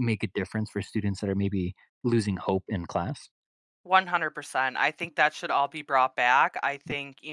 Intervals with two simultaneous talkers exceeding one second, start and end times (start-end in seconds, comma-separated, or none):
none